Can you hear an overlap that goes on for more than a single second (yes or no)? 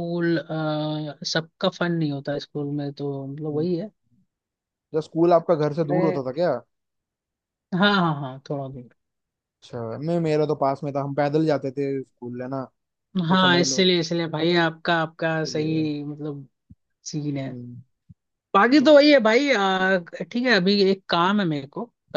no